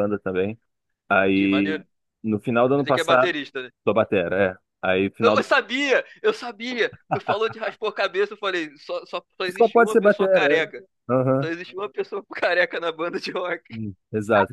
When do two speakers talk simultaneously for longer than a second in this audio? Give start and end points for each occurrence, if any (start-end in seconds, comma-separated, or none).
9.6-10.8